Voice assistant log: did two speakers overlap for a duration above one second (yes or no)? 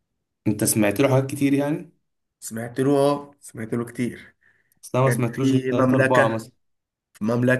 yes